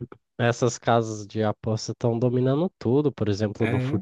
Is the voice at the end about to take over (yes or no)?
no